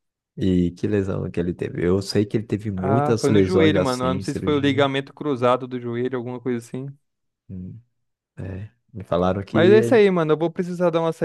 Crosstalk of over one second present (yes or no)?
yes